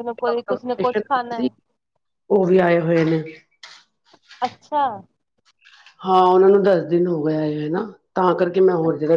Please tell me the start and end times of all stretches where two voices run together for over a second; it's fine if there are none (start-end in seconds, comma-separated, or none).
none